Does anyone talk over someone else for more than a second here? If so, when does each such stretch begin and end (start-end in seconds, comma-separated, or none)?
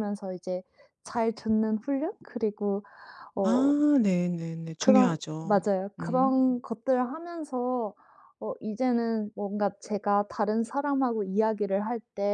4.8-6.4